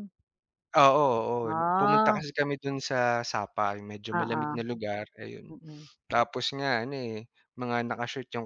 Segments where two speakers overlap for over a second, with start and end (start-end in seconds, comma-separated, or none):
none